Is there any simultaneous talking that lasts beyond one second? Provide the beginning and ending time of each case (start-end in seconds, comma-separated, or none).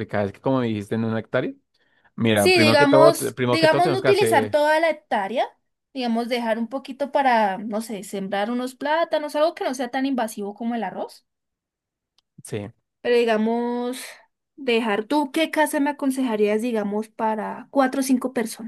2.3-4.6